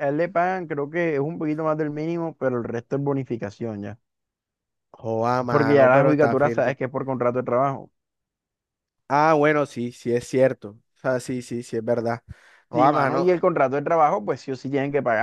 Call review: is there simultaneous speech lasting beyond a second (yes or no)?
yes